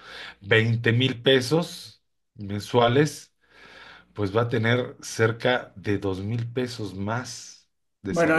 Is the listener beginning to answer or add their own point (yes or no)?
yes